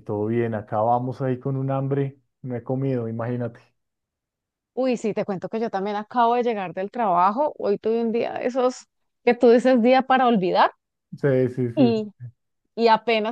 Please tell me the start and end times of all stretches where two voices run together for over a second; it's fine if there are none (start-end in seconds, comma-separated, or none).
none